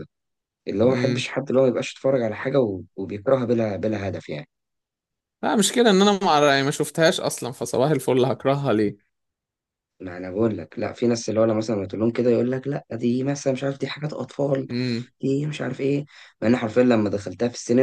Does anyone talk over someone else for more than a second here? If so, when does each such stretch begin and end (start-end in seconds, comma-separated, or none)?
none